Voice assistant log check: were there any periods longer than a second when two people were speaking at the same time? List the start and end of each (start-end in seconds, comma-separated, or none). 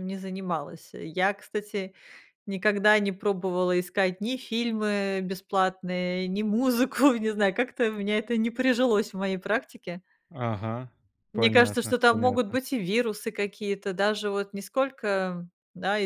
11.3-12.6